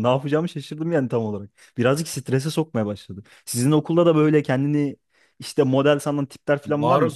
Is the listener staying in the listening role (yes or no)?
no